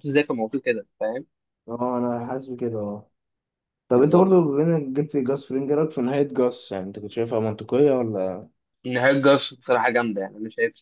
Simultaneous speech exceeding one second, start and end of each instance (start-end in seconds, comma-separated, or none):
none